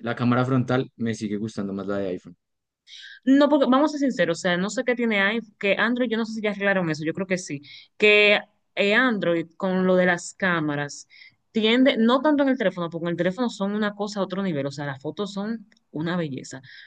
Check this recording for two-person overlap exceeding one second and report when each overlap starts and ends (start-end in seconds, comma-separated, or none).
none